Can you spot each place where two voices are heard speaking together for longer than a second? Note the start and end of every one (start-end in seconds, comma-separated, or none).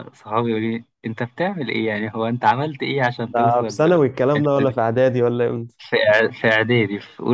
3.3-4.7